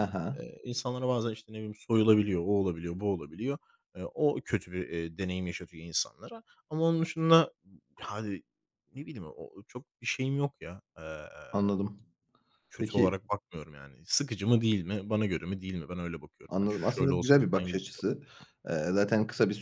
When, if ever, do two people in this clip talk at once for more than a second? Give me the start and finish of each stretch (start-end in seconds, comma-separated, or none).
16.5-18.0